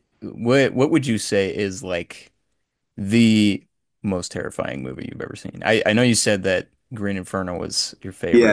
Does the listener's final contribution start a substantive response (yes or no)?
yes